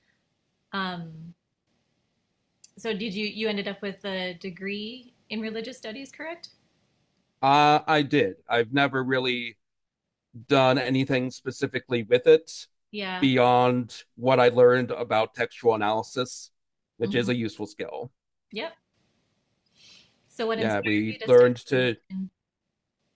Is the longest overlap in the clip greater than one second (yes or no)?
yes